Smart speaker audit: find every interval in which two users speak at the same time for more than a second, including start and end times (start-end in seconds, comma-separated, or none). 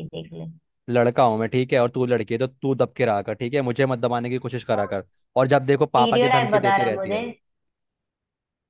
5.8-7.2